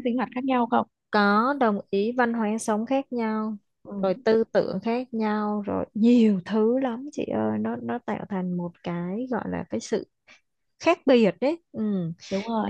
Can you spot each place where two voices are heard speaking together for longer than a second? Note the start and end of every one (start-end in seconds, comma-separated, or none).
none